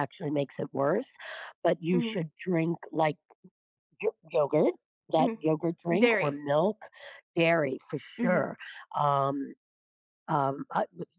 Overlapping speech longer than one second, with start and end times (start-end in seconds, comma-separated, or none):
5.2-6.4